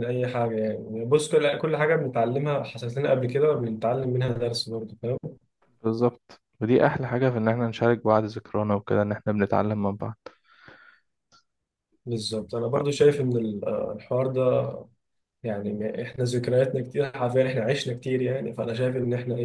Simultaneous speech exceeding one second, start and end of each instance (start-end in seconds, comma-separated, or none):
none